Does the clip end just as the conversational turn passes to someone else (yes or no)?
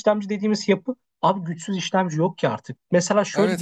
yes